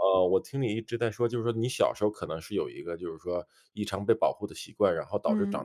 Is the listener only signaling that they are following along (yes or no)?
yes